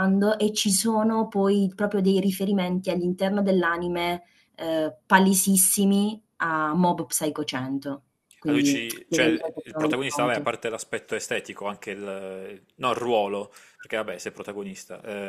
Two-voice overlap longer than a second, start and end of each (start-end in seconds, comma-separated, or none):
8.5-10.5